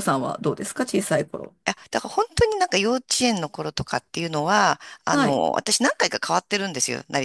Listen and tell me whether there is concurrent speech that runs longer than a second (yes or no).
no